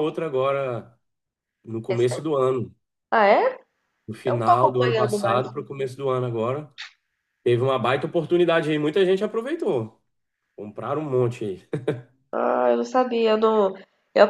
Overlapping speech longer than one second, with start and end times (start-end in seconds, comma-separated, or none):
4.3-5.5